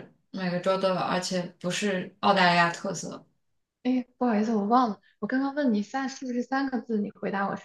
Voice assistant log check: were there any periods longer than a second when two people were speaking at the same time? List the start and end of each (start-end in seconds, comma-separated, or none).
none